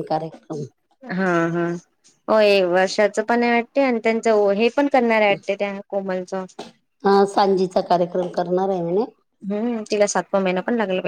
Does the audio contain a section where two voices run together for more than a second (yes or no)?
no